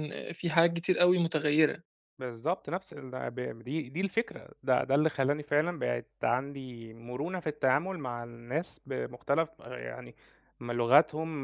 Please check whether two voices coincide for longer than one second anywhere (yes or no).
no